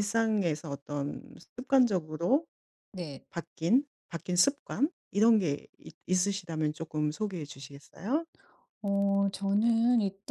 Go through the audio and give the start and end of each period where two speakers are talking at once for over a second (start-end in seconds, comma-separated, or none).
none